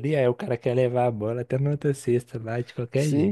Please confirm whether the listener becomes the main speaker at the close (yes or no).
yes